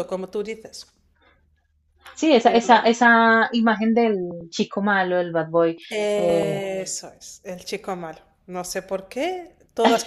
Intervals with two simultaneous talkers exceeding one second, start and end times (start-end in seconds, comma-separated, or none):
none